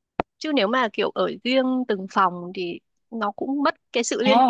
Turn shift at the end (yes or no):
yes